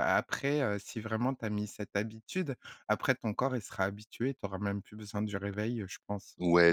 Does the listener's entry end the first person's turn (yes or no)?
yes